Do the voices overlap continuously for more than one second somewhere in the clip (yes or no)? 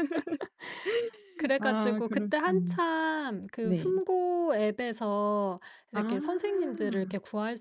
yes